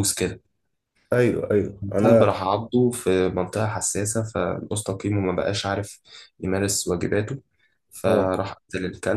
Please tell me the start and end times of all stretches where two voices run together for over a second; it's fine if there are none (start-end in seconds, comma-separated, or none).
none